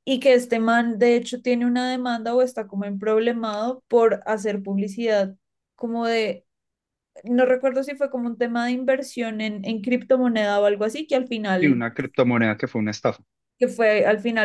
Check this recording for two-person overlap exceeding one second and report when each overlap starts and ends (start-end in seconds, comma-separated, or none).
none